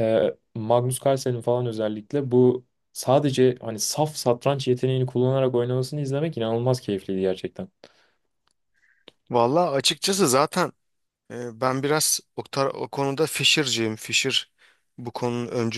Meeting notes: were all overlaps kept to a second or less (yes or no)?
yes